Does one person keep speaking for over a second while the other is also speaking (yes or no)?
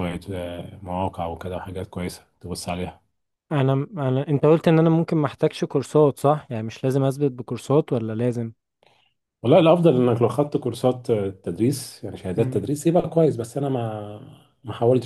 no